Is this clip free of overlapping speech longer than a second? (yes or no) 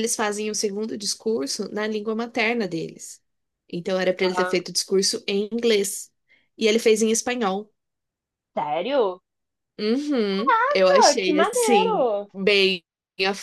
no